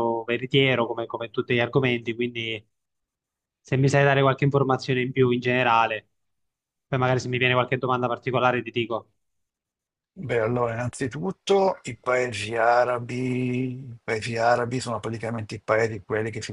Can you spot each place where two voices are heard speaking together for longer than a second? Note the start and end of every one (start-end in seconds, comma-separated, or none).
none